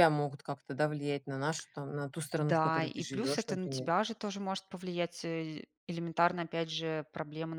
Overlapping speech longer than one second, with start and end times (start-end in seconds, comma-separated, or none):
2.4-3.9